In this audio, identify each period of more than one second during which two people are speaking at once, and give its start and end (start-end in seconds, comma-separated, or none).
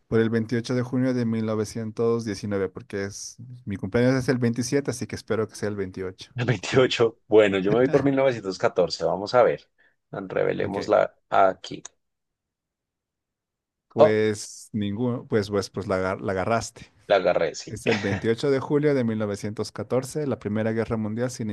none